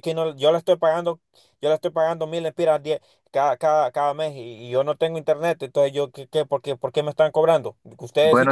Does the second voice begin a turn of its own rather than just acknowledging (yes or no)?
no